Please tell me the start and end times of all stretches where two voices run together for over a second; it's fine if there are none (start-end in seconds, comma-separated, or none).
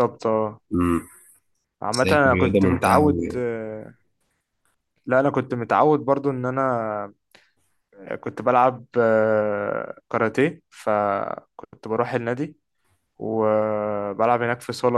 1.9-3.4